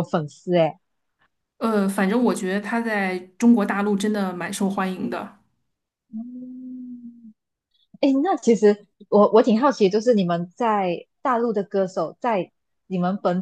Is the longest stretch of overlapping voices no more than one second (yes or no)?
yes